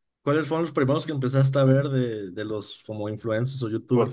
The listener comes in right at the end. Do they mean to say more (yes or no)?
yes